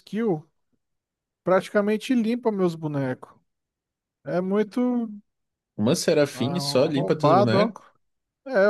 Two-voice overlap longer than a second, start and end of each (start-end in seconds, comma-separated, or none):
6.3-7.6